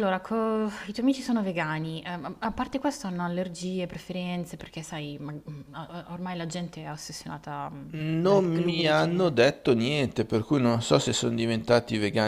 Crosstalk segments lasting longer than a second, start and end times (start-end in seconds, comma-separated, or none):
7.9-9.4